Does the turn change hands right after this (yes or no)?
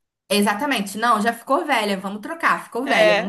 no